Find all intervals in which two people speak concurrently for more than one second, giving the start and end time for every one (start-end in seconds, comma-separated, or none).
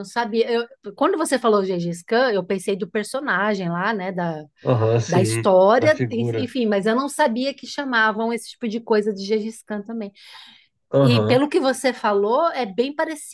5.1-6.5